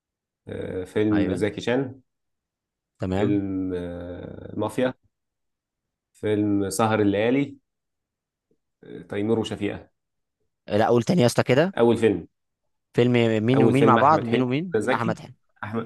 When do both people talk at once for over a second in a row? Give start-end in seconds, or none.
13.6-15.2